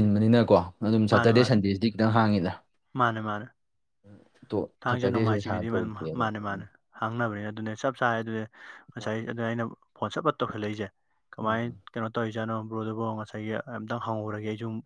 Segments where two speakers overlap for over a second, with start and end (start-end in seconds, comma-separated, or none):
4.9-6.6